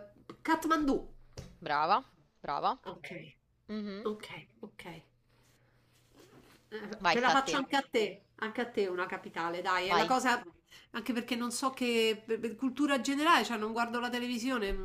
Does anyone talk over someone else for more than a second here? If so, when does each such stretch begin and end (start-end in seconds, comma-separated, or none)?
none